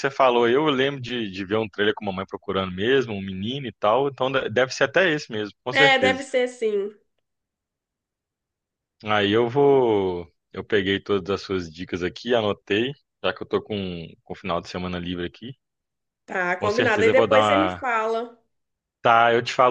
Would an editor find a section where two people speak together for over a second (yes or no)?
yes